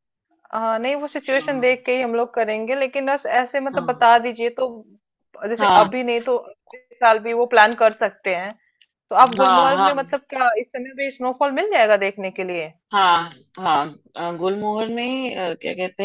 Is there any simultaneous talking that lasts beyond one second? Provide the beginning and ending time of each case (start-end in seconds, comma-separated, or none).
none